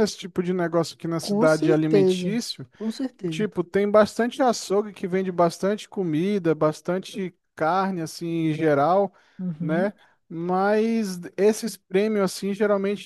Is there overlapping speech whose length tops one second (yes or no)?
yes